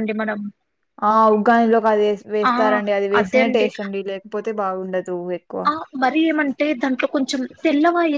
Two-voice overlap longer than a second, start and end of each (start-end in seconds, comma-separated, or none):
none